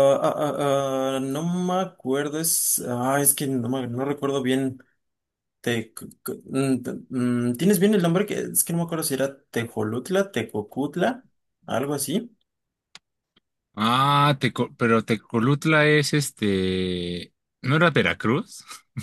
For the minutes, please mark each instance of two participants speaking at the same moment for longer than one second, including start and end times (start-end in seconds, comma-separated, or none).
none